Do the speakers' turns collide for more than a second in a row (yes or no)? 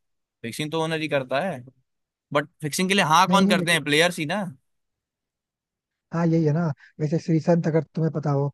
no